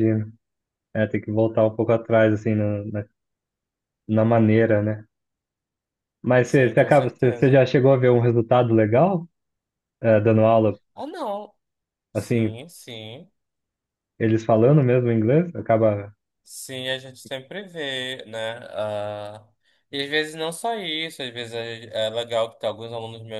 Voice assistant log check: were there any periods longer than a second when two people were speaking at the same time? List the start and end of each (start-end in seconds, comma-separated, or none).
6.4-7.6